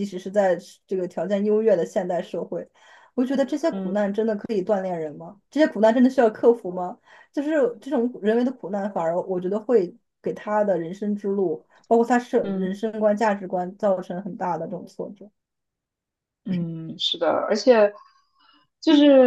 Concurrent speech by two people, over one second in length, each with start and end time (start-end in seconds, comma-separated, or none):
none